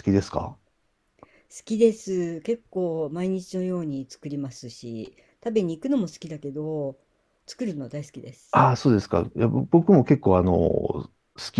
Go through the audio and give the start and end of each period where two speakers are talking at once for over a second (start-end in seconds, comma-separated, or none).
none